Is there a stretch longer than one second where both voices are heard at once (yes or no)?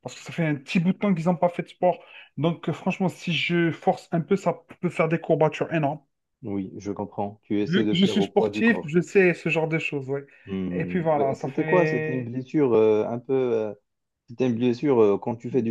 yes